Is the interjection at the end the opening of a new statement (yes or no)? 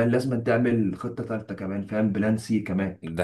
no